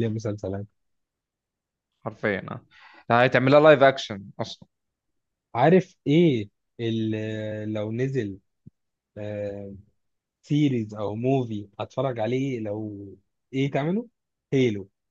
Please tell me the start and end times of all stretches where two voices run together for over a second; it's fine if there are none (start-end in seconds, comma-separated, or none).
none